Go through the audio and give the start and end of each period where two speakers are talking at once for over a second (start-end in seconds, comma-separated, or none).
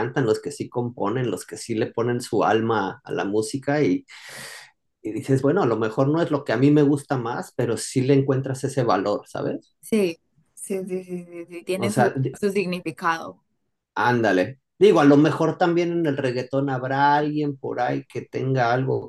none